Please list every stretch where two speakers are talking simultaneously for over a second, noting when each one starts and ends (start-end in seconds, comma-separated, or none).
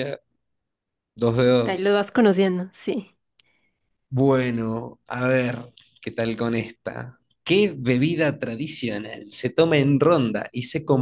none